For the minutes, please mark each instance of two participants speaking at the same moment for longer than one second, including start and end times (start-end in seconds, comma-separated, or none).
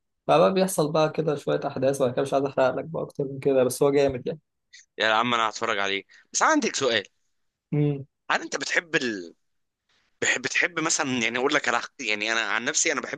none